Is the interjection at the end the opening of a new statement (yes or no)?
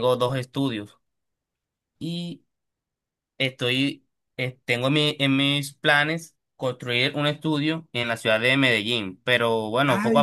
yes